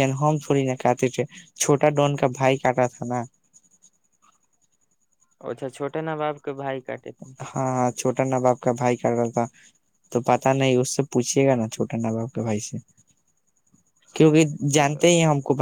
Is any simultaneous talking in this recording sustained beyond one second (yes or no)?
no